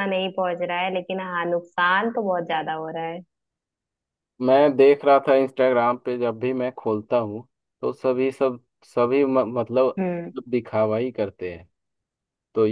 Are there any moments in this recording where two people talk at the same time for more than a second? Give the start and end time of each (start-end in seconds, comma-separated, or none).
none